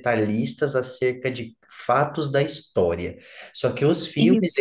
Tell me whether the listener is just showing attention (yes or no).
yes